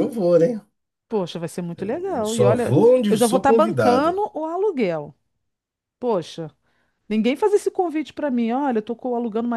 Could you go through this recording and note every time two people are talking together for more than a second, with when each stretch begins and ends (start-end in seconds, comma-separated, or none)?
1.8-4.2